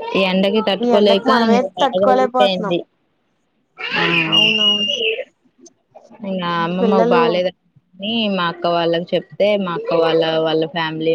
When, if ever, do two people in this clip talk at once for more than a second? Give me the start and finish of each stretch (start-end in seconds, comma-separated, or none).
0.8-2.7